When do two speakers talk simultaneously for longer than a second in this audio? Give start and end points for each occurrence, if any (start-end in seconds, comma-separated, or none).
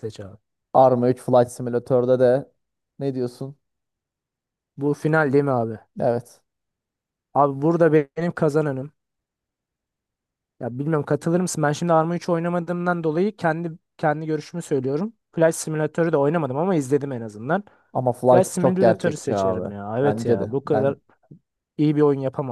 18.3-20.9